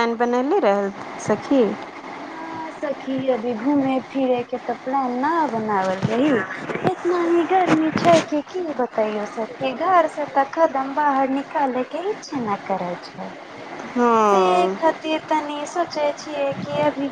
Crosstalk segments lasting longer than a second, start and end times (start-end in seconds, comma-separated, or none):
none